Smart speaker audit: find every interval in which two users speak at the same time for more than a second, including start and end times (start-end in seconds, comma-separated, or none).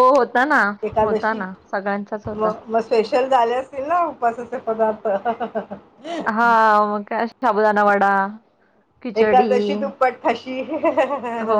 none